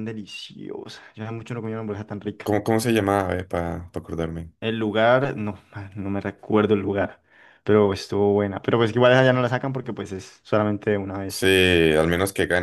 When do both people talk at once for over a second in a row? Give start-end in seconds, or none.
none